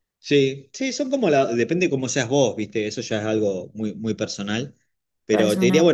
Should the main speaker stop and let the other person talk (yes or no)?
no